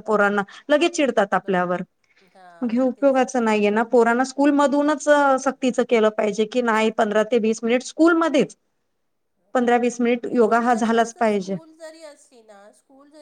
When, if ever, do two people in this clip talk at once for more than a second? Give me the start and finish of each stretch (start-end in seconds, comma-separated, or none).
10.3-11.6